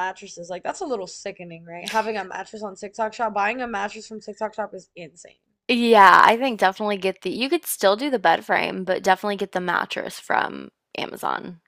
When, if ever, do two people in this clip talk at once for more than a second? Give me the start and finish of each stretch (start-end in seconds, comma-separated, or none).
none